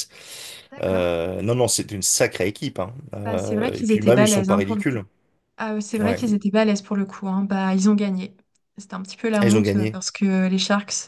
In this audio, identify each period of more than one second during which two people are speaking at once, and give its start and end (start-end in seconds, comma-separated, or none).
3.2-5.0